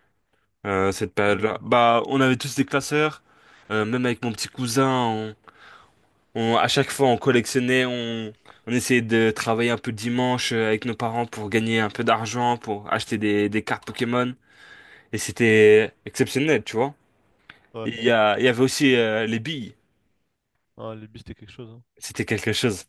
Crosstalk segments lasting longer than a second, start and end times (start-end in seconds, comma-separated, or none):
none